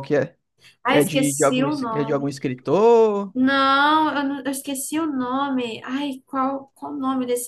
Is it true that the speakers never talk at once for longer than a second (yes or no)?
no